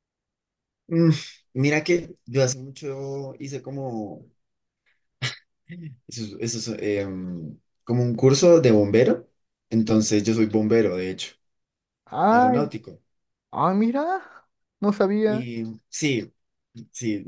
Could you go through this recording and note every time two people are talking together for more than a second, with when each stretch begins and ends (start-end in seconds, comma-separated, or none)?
none